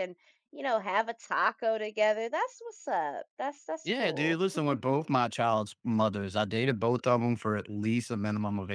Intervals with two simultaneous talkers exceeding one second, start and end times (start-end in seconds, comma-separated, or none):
none